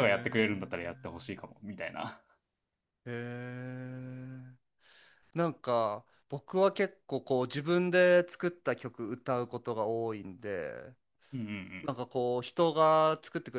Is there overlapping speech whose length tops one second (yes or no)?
no